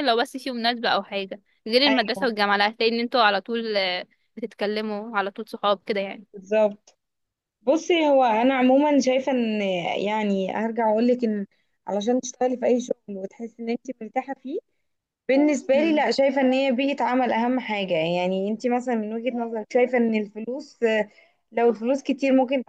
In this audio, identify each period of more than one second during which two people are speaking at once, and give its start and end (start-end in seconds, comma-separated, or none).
none